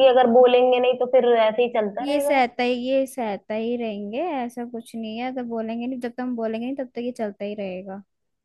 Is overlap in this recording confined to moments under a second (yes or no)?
yes